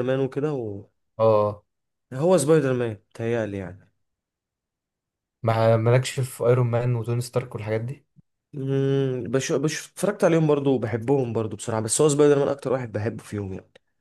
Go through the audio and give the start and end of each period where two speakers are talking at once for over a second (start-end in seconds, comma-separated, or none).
none